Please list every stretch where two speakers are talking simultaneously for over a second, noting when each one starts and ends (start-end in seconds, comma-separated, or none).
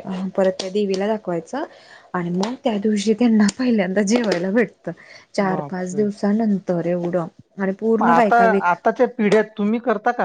none